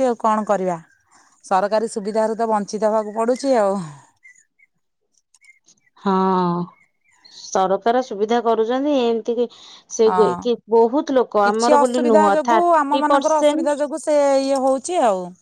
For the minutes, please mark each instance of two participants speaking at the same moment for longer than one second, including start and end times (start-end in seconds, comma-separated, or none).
11.4-13.8